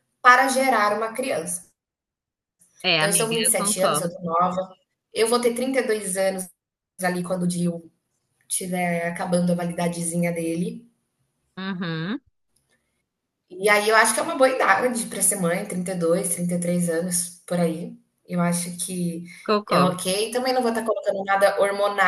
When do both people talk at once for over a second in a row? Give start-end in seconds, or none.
3.0-4.2